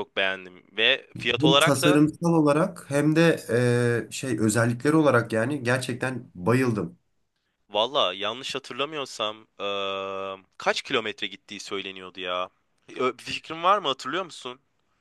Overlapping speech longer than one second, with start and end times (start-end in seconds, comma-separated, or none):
none